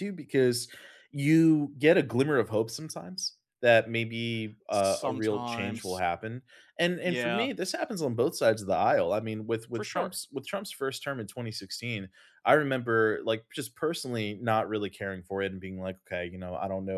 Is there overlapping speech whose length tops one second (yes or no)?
yes